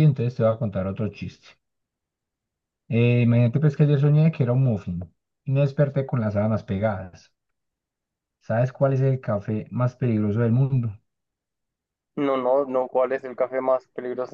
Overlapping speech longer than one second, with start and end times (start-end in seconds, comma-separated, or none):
none